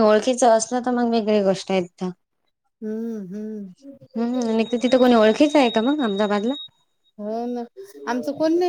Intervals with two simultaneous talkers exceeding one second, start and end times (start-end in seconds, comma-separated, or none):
none